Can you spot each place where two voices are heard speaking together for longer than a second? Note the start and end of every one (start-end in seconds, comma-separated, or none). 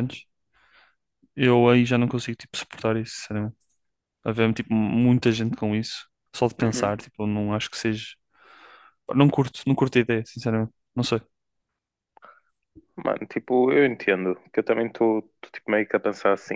none